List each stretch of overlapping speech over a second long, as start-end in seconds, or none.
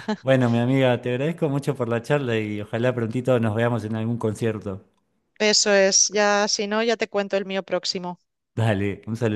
none